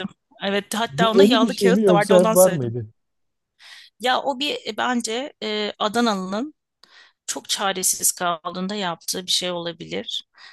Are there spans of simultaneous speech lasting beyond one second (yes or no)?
yes